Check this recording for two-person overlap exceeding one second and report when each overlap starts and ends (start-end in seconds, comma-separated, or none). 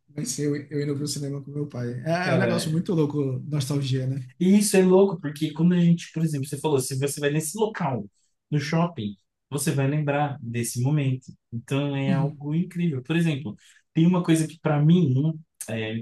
none